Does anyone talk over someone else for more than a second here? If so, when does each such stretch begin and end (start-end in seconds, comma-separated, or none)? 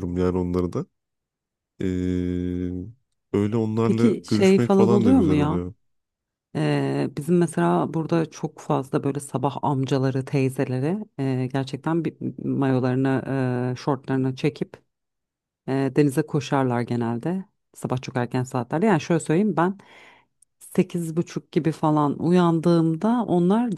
3.8-5.6